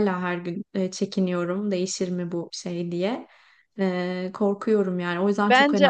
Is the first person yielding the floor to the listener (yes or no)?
yes